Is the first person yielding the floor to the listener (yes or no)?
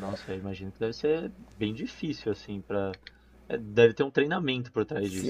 yes